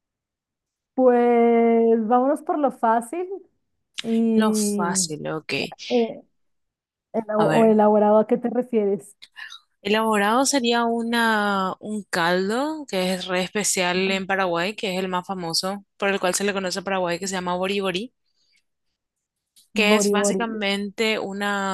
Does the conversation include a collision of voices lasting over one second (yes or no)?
no